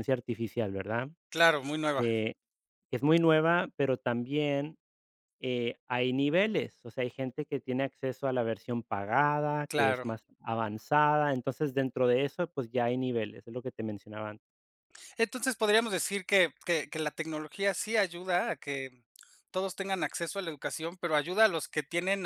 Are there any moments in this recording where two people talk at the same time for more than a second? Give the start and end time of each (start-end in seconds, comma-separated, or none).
none